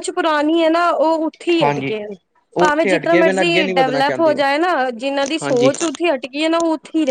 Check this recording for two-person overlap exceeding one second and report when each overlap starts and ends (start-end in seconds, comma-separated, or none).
2.6-4.4